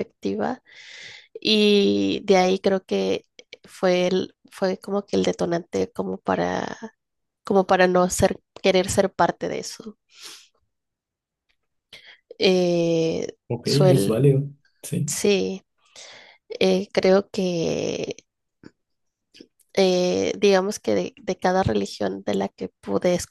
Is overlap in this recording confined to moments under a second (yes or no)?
yes